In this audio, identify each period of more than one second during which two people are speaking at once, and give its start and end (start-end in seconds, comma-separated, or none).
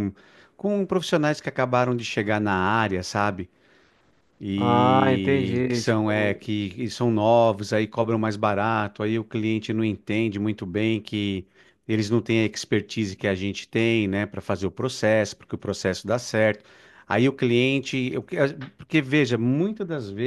4.6-6.4